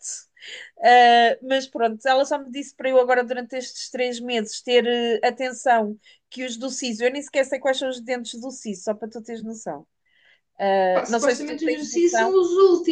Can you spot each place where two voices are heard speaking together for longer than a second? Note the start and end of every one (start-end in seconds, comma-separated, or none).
10.9-12.3